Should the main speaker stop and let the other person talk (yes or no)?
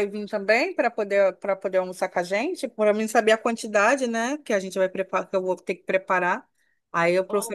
yes